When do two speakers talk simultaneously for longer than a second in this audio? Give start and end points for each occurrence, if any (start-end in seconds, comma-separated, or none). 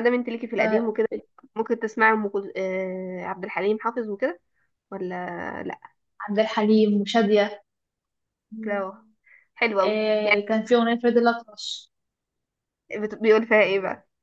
none